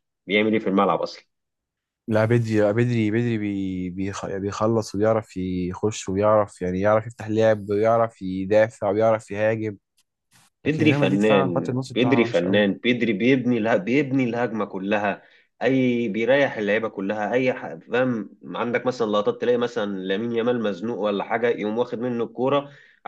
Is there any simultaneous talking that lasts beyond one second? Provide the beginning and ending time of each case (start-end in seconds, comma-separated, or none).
10.7-12.6